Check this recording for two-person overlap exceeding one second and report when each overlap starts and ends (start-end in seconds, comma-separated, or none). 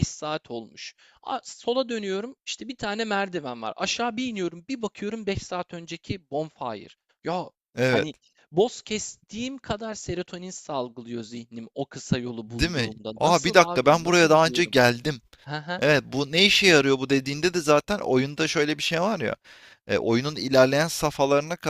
12.5-14.8